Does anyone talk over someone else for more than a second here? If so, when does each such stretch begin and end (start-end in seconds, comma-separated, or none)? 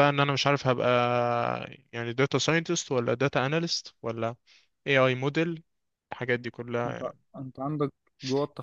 none